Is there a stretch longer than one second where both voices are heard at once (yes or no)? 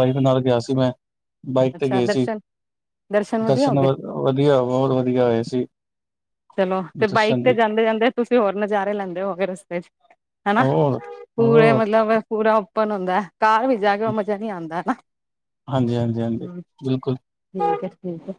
no